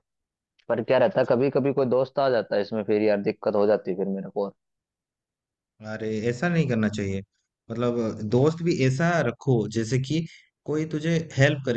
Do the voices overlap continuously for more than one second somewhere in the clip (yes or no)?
no